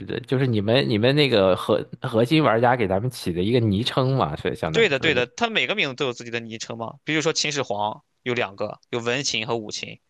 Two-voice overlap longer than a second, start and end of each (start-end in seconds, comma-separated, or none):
none